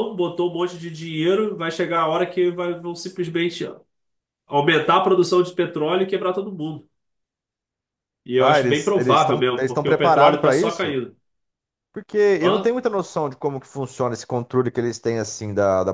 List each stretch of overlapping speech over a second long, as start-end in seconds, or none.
8.4-11.0